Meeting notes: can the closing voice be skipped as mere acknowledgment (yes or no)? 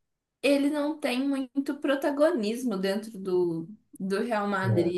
yes